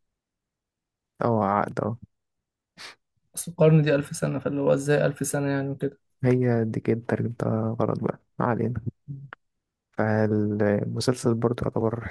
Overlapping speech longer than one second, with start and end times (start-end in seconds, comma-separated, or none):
none